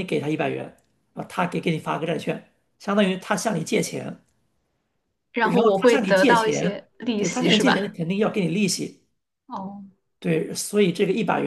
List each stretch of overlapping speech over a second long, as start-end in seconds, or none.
5.4-7.9